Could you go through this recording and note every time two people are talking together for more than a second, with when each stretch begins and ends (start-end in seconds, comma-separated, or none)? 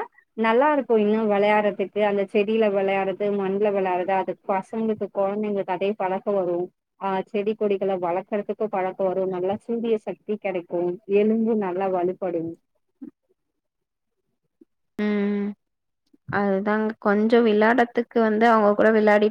none